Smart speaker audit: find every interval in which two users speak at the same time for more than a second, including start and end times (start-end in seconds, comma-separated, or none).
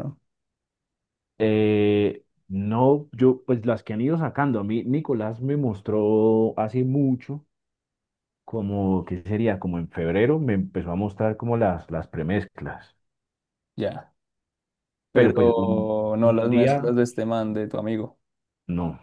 15.1-16.9